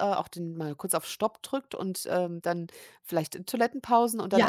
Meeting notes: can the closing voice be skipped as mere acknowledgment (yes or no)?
yes